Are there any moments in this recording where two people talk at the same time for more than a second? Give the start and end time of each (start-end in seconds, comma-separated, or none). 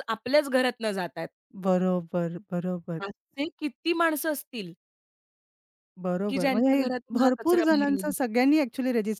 6.3-8.1